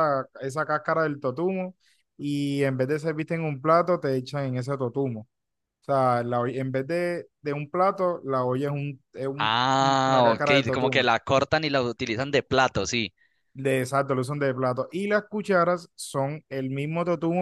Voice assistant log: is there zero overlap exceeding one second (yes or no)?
no